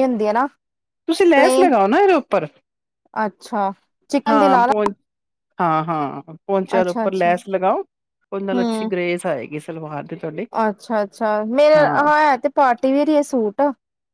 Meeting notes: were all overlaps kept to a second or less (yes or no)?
yes